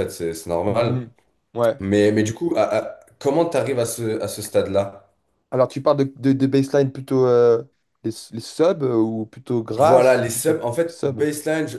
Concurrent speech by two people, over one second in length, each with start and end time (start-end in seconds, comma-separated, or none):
9.8-11.3